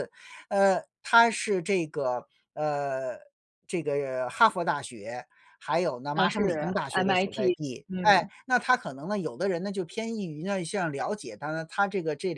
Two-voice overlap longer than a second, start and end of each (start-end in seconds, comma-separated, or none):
6.2-8.3